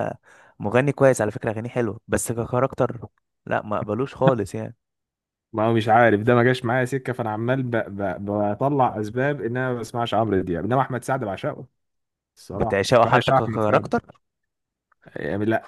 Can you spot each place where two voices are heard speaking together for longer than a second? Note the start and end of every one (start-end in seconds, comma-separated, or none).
12.5-13.9